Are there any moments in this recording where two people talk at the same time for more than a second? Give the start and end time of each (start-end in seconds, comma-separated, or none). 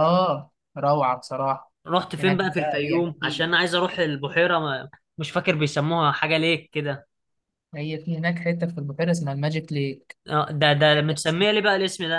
2.2-3.5